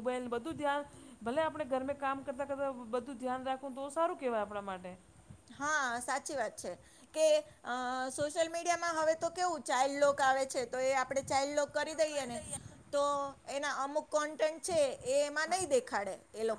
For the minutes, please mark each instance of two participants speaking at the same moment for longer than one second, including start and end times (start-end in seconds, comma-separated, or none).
none